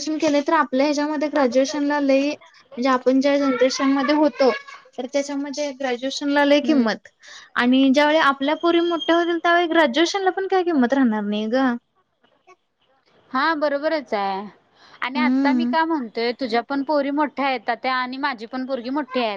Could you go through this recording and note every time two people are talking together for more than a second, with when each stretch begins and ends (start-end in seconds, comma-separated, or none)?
none